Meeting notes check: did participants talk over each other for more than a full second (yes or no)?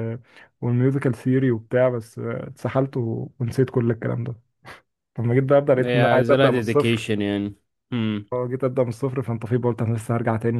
yes